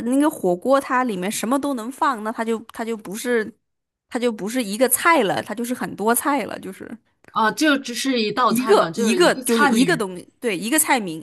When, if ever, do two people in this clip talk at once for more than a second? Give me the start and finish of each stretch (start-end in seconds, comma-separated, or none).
8.4-10.1